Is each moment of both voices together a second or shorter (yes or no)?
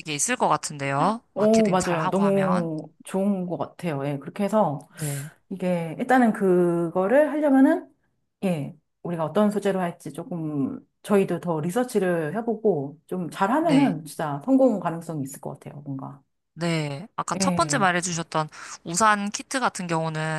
no